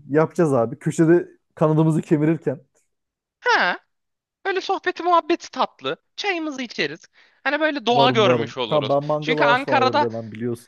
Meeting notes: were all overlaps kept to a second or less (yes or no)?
no